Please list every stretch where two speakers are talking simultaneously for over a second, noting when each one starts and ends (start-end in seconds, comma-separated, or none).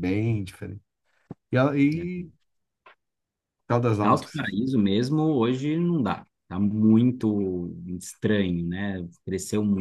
none